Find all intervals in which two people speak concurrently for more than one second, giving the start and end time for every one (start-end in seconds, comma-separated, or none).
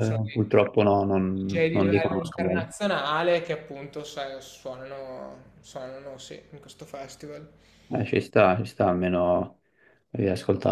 1.3-2.7